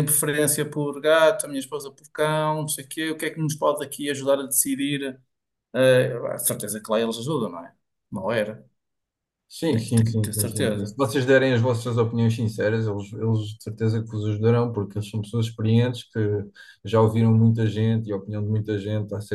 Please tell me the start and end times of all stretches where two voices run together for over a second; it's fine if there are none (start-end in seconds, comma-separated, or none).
9.7-11.0